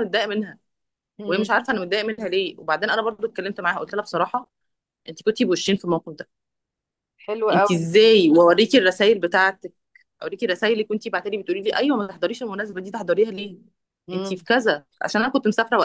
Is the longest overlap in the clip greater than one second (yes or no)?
yes